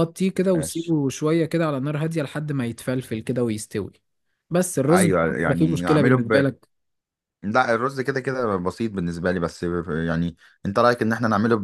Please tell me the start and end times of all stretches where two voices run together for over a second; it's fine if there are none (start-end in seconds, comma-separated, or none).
4.9-6.4